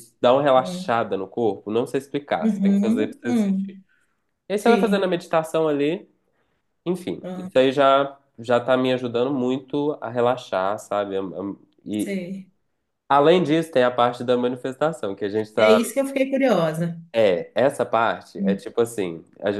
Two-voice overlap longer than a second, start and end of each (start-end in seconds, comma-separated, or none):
2.4-3.8